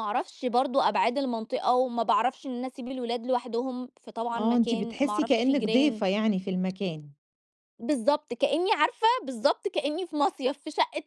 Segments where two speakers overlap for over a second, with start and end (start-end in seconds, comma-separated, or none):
4.3-6.0